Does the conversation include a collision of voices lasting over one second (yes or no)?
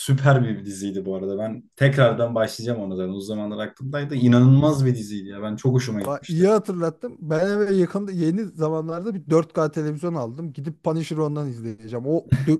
no